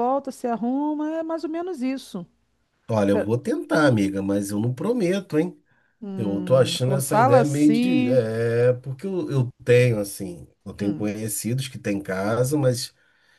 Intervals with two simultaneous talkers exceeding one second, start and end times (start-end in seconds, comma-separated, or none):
6.2-8.2